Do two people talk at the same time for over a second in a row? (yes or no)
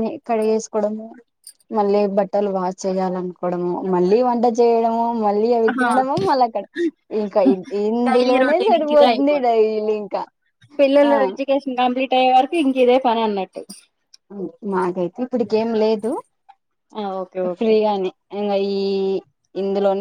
yes